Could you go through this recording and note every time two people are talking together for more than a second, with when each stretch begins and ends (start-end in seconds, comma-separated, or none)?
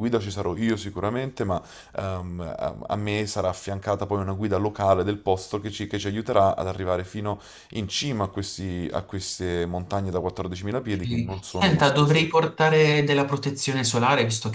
10.9-12.3